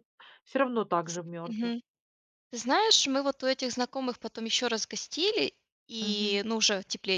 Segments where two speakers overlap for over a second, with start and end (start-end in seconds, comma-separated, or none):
none